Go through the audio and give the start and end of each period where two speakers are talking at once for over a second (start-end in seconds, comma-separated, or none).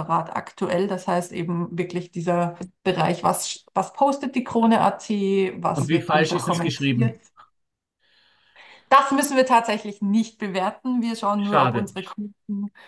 5.7-7.2